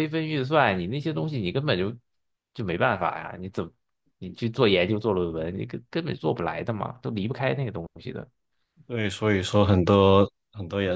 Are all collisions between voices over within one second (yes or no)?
yes